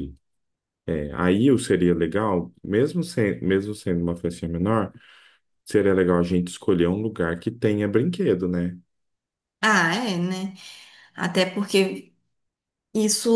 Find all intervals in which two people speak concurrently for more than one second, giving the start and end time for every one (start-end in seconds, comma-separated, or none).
none